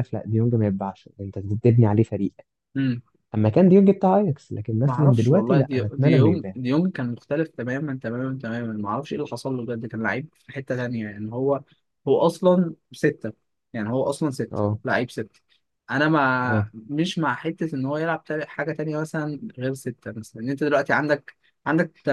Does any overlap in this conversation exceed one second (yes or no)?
yes